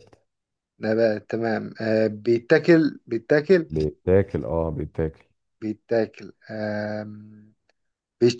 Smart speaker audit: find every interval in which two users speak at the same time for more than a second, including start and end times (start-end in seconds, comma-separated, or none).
none